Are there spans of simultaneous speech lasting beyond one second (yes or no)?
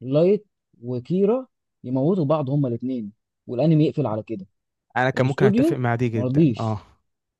yes